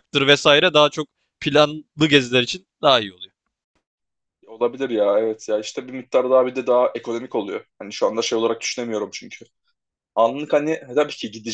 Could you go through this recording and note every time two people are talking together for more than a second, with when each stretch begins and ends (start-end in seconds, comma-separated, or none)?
none